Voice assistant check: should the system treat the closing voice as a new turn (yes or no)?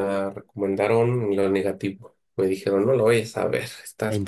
yes